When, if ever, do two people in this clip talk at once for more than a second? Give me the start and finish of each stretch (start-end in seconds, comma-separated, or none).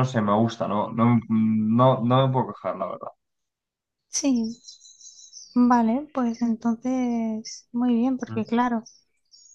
none